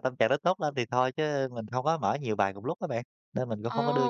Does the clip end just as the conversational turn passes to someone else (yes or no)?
yes